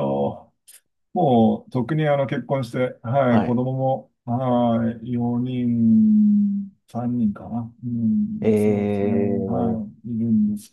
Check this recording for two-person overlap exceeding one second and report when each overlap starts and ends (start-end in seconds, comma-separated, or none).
8.4-9.8